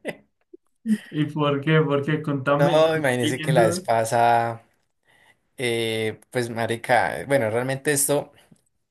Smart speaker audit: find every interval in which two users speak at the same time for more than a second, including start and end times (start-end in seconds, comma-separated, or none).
2.5-3.9